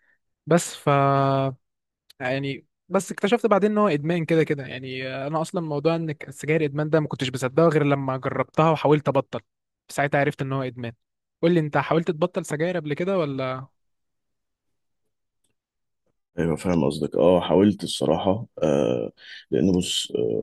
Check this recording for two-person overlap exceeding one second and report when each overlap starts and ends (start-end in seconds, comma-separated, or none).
none